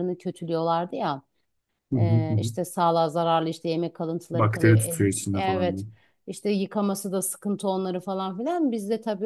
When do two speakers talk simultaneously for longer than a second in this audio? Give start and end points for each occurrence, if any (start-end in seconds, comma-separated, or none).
4.3-5.8